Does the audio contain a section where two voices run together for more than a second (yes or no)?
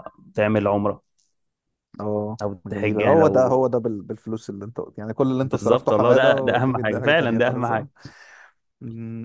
yes